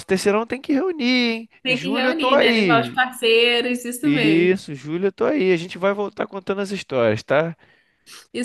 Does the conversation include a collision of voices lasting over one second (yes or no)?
yes